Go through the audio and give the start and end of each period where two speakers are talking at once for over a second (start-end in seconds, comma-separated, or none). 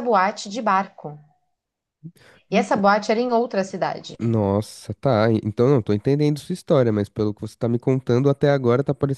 none